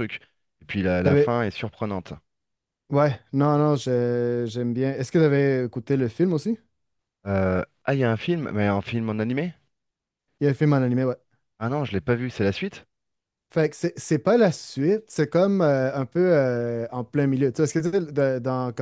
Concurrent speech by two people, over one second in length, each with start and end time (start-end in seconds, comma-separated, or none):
none